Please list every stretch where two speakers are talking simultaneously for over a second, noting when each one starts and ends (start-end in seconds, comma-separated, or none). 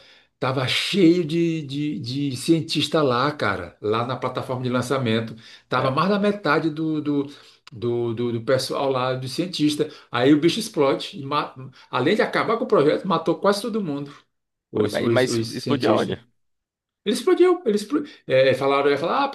14.7-16.2